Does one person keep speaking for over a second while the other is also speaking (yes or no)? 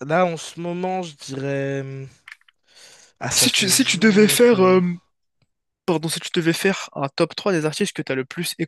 yes